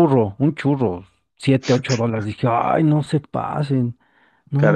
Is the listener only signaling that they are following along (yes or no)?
no